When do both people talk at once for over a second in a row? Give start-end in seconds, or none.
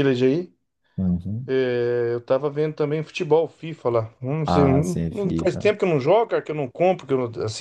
4.4-5.7